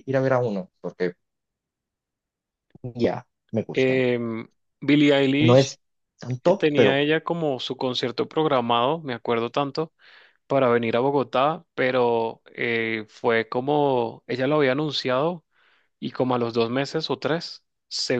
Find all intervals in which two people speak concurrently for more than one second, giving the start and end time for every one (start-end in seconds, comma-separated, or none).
none